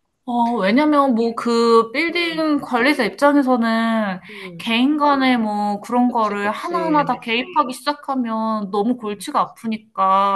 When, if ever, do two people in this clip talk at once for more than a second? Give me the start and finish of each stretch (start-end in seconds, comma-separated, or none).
6.1-7.3